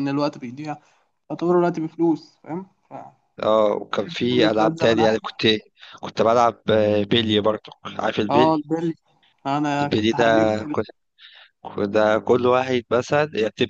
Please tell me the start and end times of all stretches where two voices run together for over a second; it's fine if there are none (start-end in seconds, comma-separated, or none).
4.0-5.2